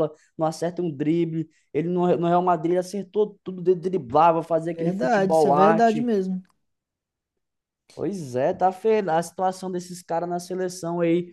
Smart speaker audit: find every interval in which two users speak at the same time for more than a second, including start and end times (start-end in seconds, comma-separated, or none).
4.8-6.1